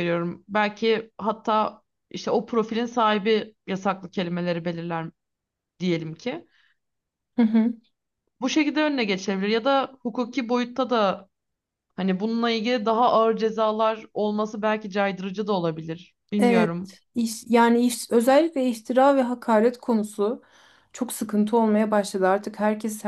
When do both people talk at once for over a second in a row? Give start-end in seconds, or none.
none